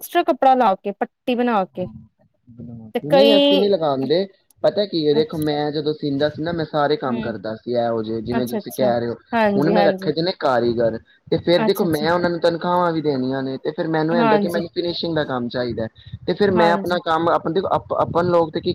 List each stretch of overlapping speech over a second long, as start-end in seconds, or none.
none